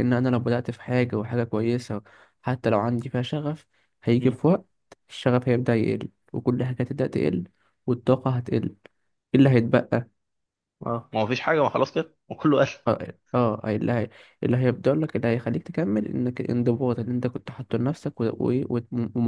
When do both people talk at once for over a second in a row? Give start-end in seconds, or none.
none